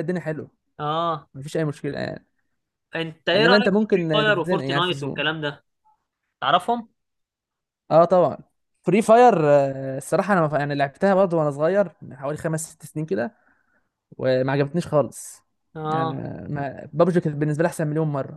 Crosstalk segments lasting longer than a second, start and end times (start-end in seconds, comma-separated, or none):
3.4-5.3